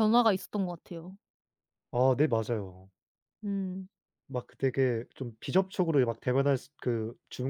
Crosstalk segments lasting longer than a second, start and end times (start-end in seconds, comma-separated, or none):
none